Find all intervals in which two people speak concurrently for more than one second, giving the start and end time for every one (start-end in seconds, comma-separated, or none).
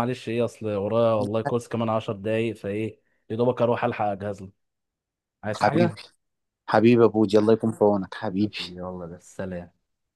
none